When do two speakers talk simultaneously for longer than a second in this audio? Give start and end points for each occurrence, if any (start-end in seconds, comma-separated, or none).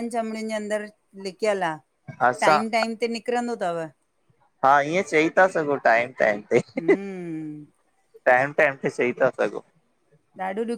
none